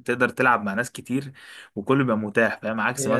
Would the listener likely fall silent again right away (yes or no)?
yes